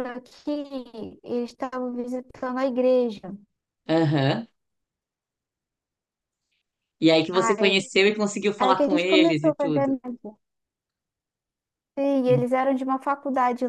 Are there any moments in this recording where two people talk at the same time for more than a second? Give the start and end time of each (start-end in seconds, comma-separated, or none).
8.6-9.9